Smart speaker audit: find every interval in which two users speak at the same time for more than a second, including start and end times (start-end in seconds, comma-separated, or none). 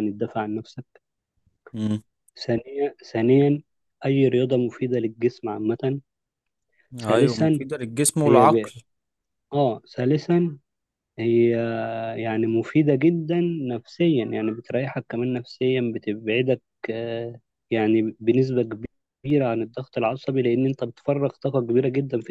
none